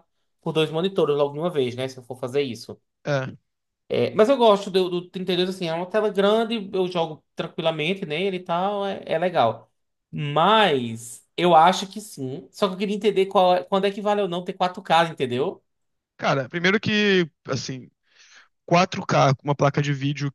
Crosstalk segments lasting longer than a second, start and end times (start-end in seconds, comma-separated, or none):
none